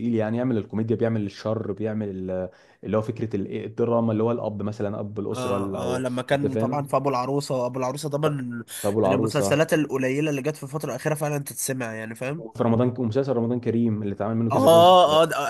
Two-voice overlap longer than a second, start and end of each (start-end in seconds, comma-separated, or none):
5.3-6.9